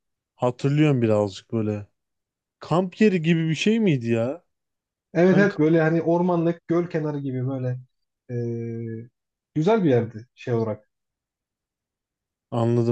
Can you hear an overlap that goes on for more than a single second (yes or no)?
no